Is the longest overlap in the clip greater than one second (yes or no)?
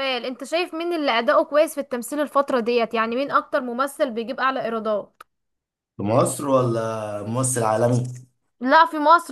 no